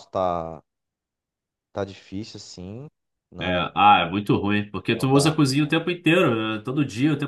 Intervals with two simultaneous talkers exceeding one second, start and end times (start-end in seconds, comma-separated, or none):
none